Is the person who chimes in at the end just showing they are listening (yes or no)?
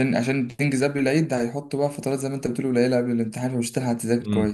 no